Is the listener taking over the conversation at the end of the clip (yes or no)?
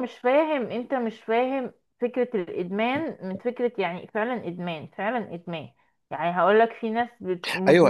yes